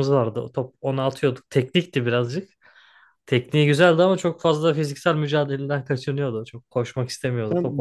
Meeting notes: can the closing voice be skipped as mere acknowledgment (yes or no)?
no